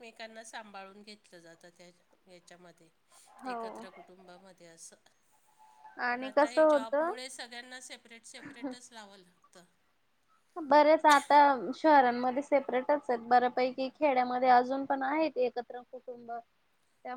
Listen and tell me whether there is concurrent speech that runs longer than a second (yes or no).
no